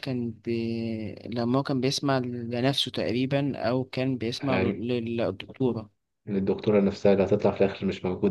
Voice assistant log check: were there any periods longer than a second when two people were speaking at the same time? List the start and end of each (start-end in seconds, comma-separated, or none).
none